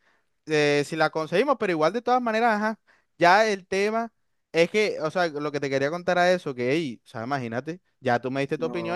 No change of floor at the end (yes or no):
yes